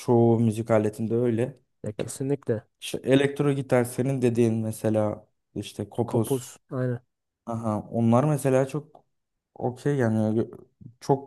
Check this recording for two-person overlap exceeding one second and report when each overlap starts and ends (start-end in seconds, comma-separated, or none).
none